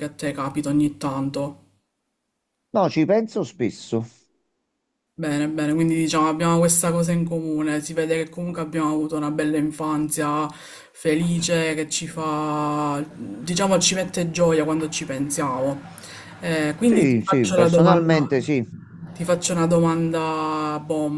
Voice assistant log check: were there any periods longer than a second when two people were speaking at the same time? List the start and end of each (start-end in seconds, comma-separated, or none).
16.8-18.3